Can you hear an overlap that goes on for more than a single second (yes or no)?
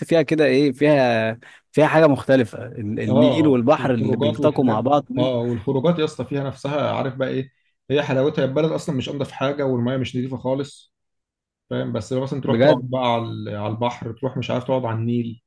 yes